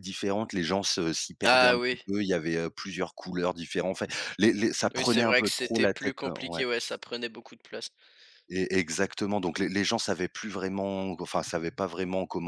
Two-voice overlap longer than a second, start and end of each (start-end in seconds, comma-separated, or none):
4.9-6.6